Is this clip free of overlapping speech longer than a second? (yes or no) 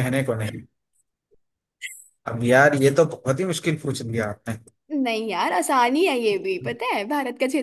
yes